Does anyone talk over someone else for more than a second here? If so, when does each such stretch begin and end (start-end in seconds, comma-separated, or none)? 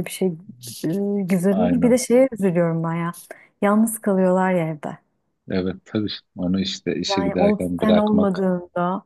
7.1-8.4